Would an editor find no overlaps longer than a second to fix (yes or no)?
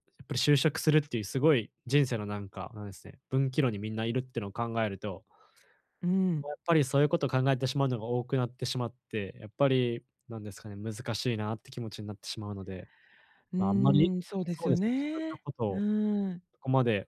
no